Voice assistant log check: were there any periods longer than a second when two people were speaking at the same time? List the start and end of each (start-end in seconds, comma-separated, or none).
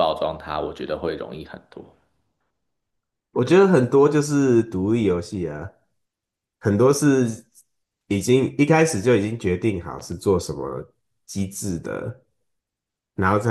none